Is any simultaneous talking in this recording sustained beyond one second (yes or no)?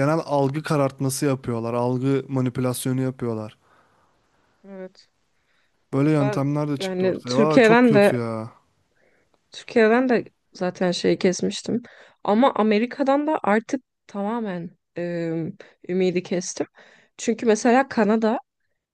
yes